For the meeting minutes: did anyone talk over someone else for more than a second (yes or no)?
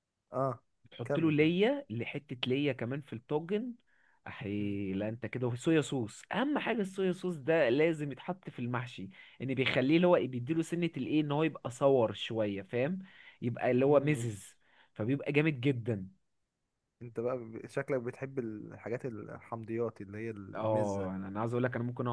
no